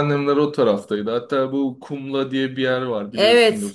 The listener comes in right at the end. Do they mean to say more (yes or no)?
yes